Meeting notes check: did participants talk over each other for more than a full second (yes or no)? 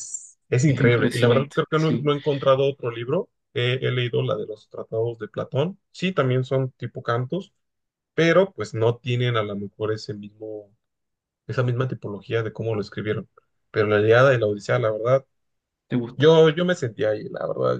yes